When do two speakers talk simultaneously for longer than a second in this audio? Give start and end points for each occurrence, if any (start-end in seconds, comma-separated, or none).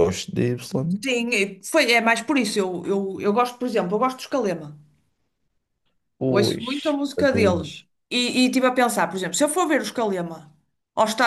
6.3-7.7